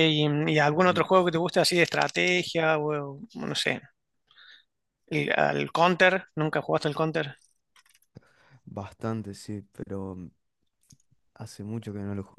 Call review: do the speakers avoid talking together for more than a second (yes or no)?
yes